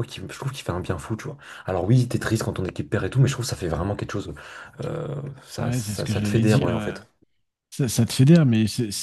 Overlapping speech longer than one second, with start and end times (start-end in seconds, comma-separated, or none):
5.6-7.0